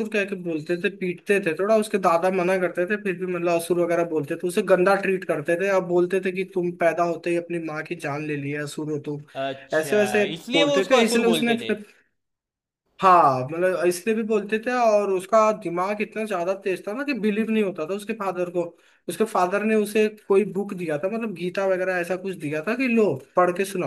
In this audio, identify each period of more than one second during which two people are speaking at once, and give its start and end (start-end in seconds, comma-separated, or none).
9.8-11.7